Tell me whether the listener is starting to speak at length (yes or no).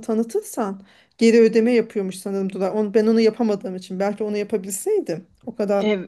no